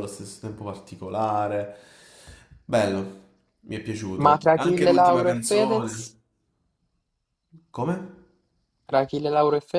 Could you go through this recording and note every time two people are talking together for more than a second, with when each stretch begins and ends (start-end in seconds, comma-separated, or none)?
4.2-6.2